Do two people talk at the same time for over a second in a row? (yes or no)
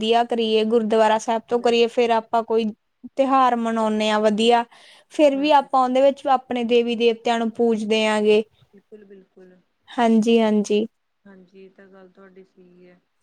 no